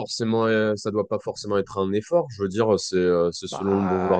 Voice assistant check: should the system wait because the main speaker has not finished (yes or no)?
yes